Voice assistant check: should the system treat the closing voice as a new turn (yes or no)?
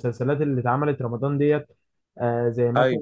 no